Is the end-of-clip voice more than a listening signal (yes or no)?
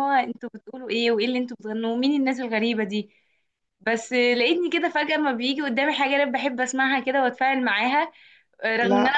no